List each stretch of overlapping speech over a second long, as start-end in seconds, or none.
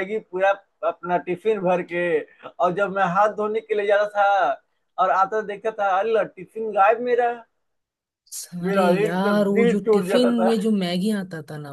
8.7-10.5